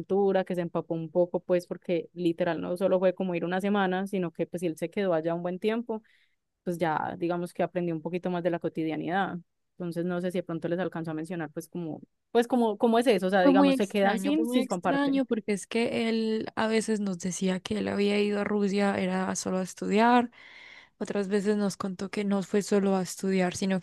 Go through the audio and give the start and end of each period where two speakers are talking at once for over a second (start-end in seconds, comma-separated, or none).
13.4-15.2